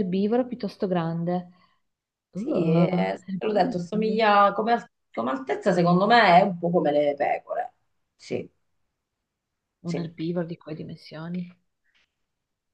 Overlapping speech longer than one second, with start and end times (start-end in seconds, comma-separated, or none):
2.3-4.3